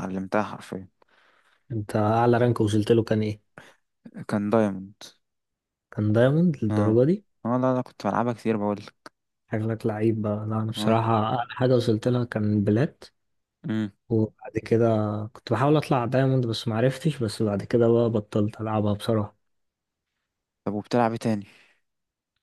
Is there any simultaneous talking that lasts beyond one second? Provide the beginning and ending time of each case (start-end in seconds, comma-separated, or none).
none